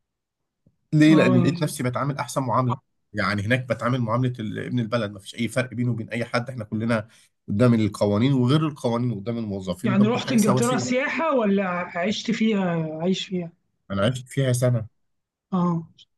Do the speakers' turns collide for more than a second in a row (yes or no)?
yes